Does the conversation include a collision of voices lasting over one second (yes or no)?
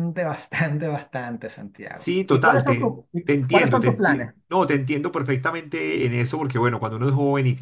yes